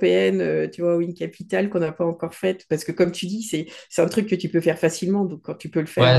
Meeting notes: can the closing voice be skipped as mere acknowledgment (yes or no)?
no